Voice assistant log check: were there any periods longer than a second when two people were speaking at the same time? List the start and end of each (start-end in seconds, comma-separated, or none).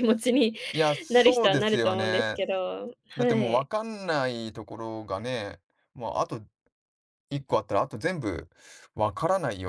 1.1-2.4